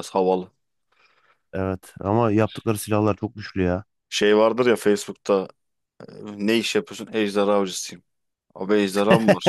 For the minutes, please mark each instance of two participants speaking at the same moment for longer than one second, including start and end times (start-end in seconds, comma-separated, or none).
none